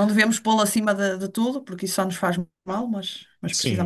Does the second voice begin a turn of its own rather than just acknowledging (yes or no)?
yes